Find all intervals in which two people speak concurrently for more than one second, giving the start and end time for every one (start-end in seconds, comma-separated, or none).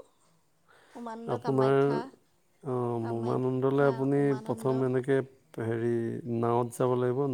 3.0-4.7